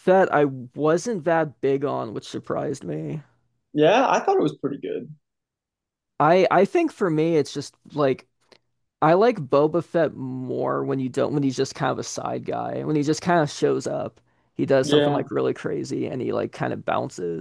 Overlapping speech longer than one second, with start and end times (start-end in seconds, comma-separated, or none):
none